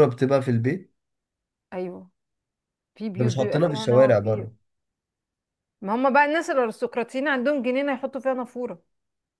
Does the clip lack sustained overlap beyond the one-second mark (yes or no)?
no